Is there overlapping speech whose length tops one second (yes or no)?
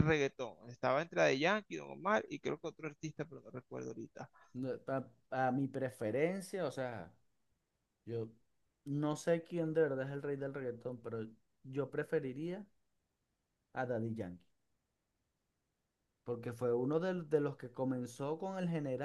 no